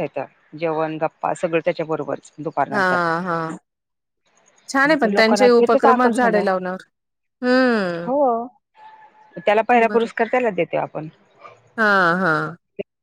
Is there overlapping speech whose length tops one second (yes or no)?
yes